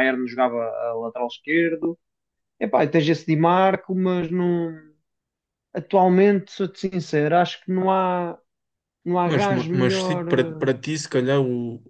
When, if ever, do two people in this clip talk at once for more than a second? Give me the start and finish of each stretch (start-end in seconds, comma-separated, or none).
9.2-10.7